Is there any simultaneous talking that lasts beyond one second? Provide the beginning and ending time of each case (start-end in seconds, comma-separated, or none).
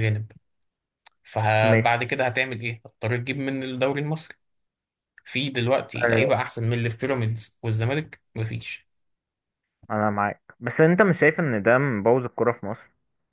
none